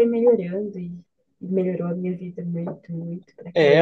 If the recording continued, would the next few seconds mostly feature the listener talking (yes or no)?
yes